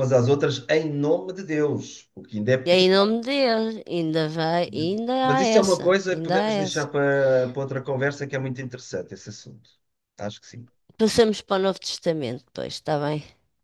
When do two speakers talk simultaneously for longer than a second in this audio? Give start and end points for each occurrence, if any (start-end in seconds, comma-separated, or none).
4.7-6.9